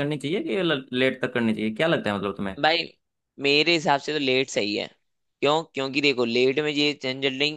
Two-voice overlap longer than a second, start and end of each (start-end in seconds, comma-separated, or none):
none